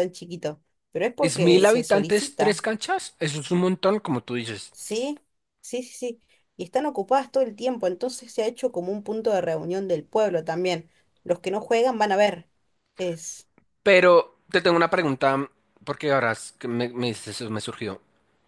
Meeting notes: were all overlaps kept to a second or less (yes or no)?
no